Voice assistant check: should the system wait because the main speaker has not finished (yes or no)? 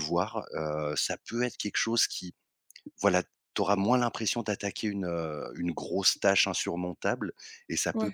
yes